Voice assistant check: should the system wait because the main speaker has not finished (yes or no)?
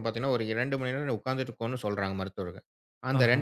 yes